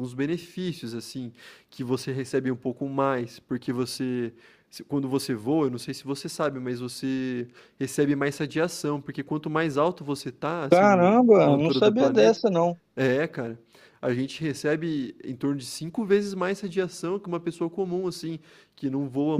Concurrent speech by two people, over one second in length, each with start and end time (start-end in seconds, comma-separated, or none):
10.7-12.4